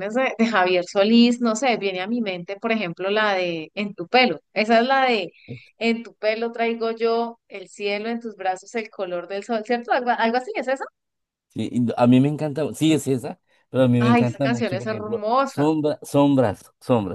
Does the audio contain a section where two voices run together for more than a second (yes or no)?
yes